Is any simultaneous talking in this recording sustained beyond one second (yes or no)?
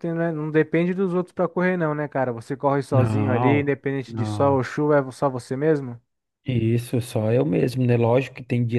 yes